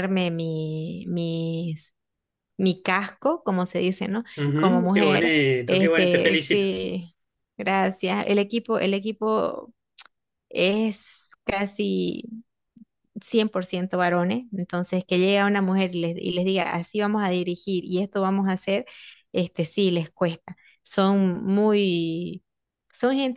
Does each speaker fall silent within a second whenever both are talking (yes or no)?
no